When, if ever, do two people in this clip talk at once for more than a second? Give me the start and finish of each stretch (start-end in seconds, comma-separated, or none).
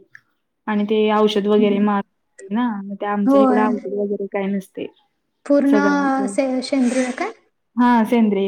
none